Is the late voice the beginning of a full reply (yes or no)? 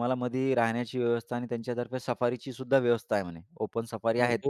yes